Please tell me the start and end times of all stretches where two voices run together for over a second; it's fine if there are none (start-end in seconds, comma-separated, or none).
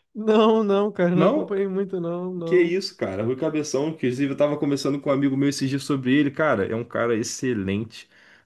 none